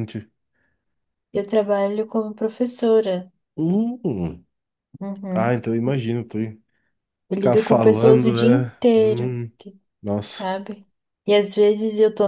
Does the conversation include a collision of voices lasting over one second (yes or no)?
yes